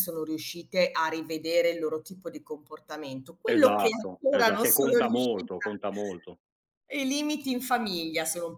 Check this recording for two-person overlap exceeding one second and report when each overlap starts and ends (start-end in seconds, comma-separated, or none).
3.5-5.5